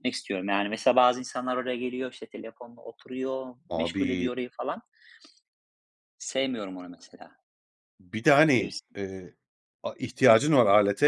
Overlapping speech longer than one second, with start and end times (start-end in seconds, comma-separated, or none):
none